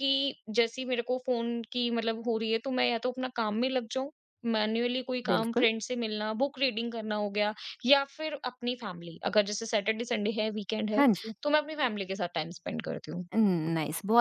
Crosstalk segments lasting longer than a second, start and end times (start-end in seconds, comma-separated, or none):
none